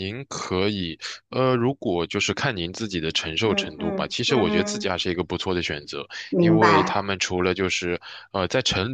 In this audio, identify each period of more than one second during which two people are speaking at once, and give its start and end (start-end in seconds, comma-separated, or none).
3.4-4.9